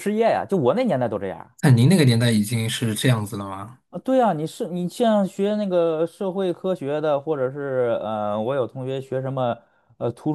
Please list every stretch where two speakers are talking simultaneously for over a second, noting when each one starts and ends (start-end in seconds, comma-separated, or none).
none